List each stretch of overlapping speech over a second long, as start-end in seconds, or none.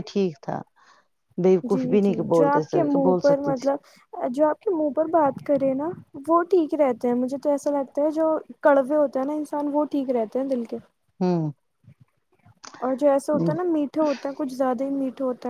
1.7-3.8